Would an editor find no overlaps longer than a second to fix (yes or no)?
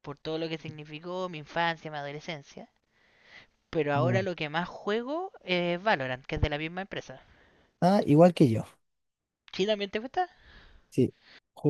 yes